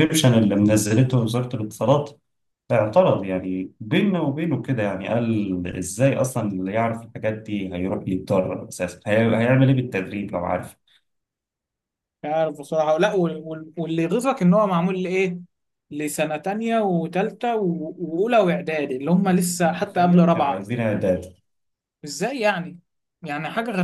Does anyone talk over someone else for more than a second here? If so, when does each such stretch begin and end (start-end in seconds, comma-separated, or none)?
19.2-20.7